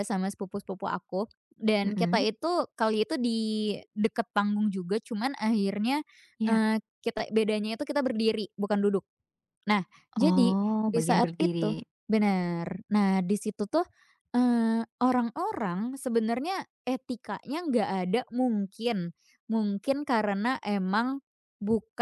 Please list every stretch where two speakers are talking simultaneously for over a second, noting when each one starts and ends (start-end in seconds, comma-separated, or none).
10.2-11.8